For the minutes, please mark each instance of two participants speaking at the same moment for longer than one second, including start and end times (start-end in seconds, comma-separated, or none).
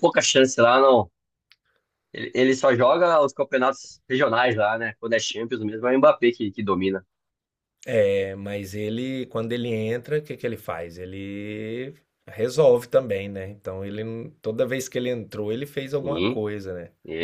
none